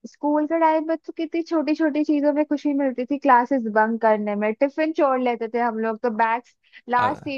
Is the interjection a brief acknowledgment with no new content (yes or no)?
yes